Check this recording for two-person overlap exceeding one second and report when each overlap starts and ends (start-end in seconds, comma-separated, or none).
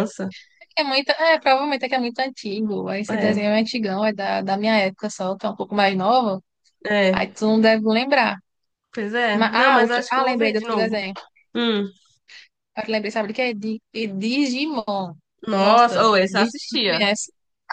9.3-11.0, 15.6-17.0